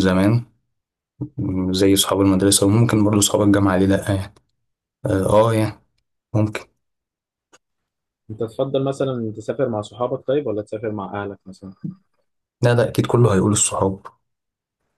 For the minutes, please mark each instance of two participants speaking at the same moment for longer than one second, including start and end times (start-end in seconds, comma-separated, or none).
none